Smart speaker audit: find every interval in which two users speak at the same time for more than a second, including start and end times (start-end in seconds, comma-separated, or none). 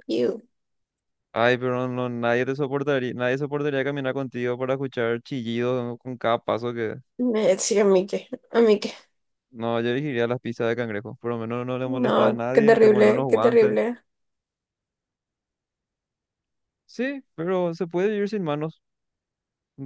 11.8-13.8